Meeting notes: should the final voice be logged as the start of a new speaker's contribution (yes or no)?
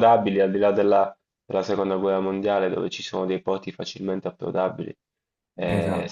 no